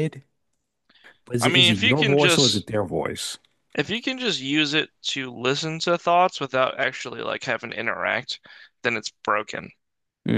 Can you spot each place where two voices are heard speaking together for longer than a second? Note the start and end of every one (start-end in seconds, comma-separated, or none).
1.4-2.7